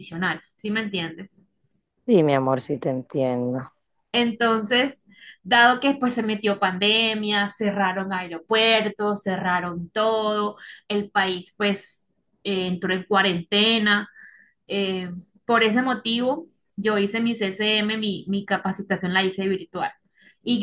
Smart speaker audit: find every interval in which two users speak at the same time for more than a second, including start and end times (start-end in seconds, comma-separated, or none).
none